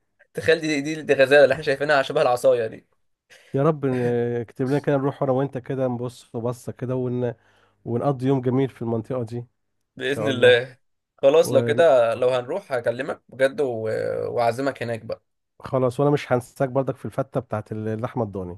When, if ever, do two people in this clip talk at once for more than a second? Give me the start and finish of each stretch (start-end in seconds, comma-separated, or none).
none